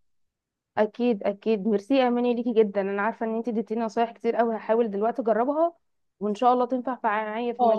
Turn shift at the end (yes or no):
yes